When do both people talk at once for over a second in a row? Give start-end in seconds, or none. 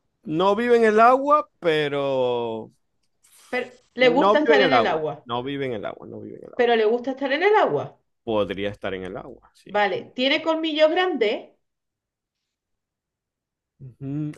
4.0-5.3